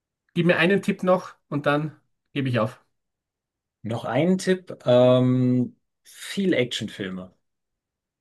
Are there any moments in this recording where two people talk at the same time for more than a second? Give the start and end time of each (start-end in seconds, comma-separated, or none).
none